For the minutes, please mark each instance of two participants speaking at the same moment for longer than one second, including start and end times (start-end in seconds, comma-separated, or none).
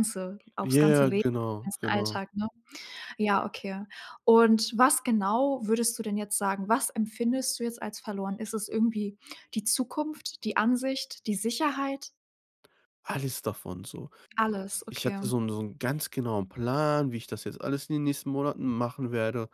0.6-2.2